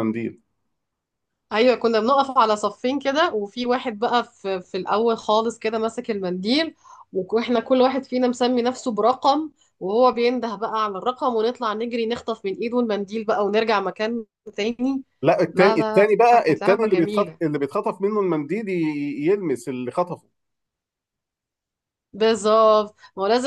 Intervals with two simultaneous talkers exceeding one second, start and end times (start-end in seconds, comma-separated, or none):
15.5-17.4